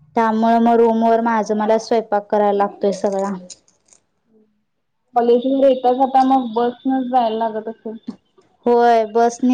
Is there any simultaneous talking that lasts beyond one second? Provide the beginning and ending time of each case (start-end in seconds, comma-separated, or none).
none